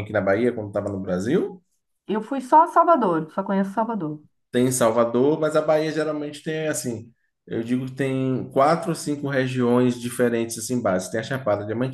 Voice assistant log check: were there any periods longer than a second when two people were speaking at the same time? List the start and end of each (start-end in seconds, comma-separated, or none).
none